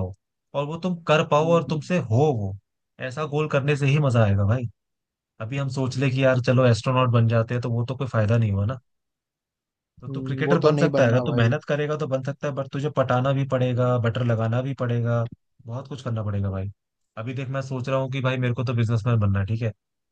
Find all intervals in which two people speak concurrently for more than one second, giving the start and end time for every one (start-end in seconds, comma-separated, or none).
10.1-11.6